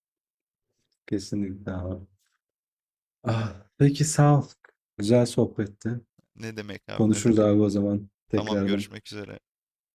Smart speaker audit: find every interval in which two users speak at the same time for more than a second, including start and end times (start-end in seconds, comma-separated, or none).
none